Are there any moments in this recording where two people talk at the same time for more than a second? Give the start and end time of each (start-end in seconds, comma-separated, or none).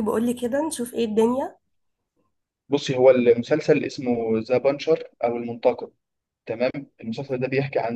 none